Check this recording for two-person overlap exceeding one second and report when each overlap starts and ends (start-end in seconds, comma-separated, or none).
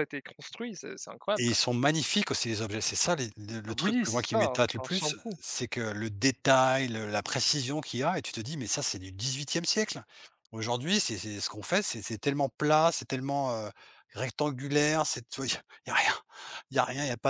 3.8-5.4